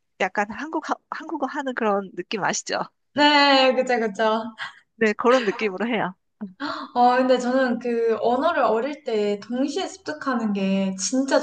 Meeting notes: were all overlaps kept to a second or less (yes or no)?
yes